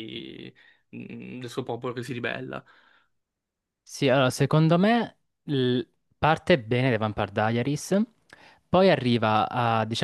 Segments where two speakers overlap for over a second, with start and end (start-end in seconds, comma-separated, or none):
none